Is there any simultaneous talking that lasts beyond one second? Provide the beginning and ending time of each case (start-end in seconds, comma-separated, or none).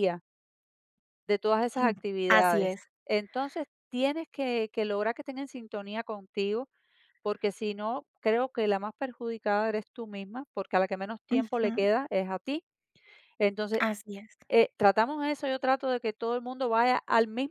none